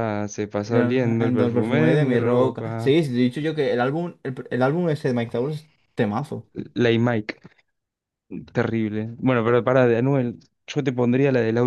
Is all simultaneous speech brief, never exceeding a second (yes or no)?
no